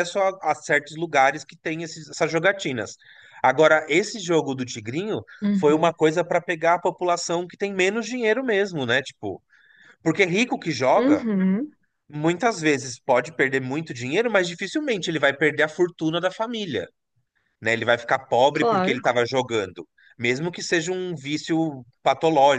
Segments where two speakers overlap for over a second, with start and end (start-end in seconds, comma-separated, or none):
none